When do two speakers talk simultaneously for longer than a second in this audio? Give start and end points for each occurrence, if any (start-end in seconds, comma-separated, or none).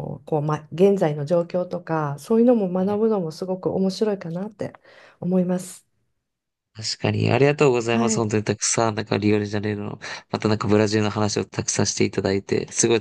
none